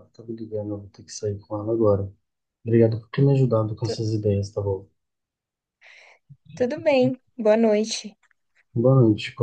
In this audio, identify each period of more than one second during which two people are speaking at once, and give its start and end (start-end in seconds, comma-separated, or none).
none